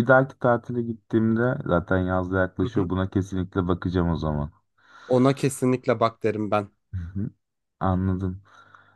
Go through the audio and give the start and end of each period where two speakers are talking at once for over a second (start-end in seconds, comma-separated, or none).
none